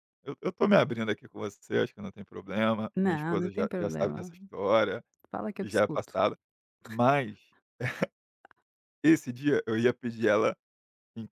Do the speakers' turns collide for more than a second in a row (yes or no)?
yes